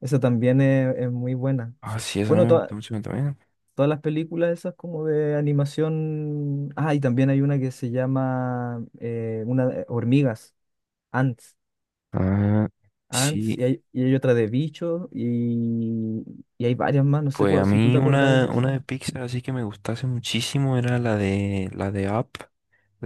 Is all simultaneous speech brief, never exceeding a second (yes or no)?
no